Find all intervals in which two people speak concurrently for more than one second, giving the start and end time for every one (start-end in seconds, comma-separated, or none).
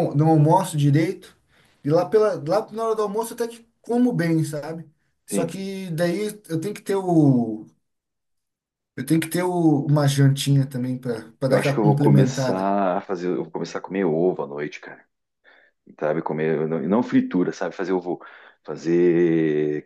11.5-12.7